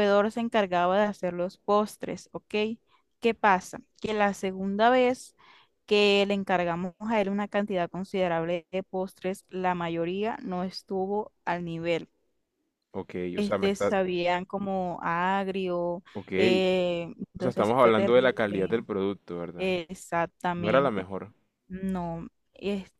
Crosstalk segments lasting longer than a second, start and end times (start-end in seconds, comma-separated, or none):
17.4-18.8